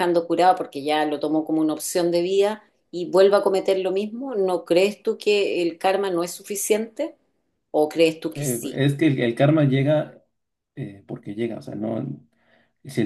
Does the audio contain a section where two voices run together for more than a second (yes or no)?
no